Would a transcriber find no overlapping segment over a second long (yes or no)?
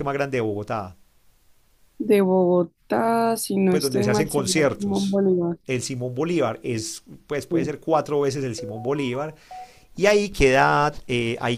no